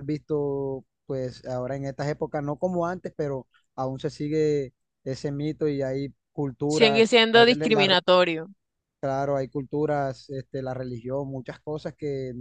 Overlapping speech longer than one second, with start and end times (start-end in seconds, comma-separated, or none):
6.7-8.0